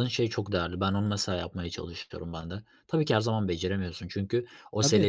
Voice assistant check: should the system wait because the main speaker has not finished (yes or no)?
yes